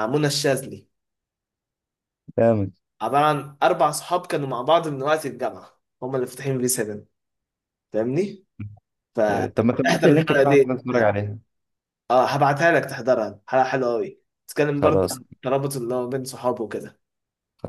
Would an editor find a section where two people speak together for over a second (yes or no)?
yes